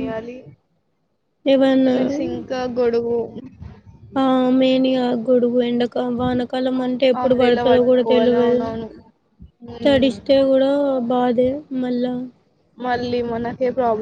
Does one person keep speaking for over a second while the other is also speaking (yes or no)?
yes